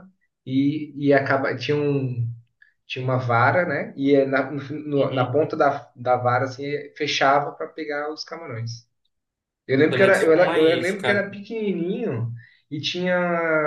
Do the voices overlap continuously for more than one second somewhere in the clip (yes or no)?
yes